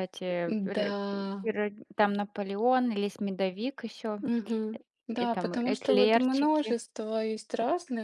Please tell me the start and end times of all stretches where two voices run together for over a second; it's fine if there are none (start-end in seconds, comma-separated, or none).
5.1-6.8